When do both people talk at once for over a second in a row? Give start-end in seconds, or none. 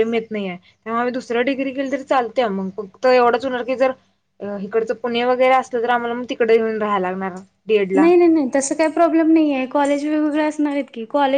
none